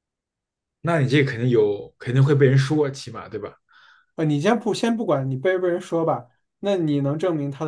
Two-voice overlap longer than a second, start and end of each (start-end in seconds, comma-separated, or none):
none